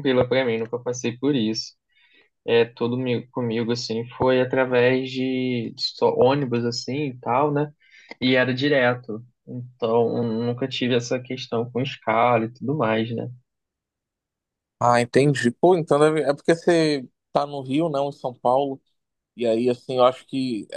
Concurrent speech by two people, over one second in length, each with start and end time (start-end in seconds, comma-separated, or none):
none